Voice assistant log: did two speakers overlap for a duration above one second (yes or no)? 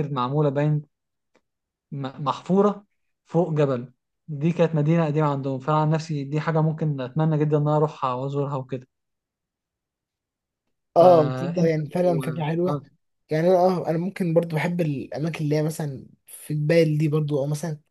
yes